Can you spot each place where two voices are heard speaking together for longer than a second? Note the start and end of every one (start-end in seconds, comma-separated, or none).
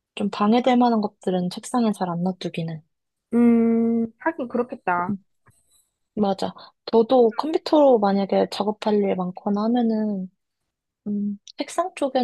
none